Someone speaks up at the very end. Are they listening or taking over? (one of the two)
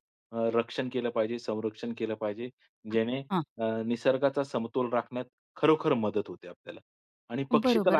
taking over